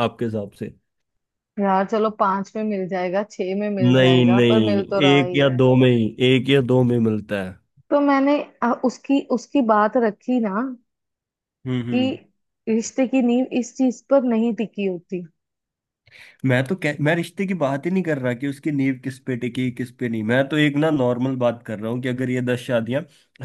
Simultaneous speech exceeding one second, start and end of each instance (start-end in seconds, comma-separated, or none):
3.8-5.6